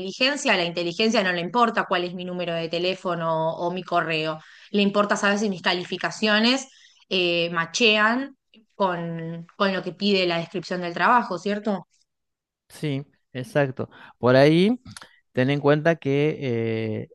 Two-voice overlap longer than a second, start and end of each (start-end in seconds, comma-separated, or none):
none